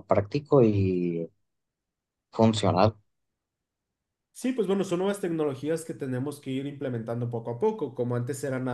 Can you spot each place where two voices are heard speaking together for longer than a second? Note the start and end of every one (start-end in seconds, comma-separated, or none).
none